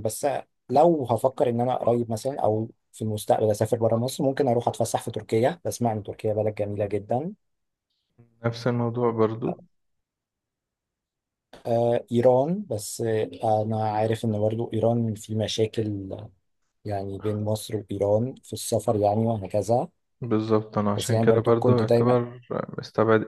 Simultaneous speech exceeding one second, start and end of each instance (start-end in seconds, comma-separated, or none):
21.0-22.2